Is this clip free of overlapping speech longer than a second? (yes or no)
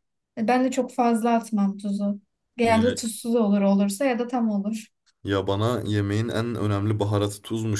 yes